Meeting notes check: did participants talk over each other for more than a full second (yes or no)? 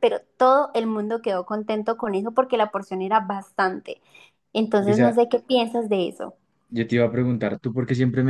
no